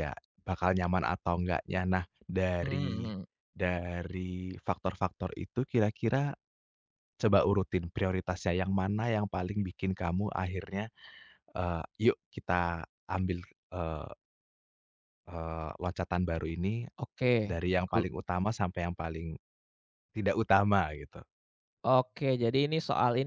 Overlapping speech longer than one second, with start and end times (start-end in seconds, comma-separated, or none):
none